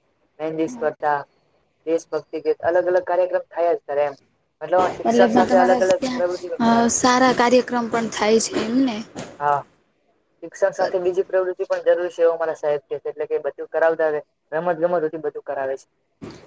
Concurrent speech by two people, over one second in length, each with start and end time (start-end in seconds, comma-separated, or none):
5.1-6.9